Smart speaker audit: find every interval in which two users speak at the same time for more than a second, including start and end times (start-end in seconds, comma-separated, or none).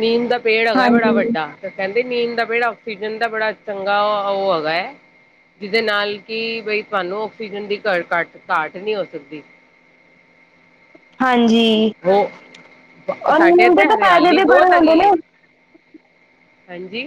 13.4-15.1